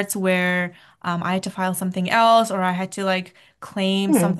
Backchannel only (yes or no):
yes